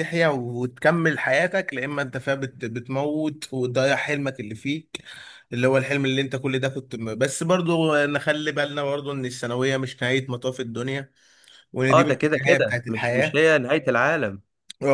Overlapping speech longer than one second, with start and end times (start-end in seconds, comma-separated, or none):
11.9-13.4